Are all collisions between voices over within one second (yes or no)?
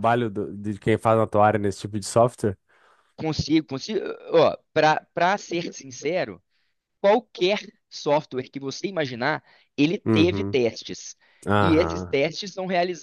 yes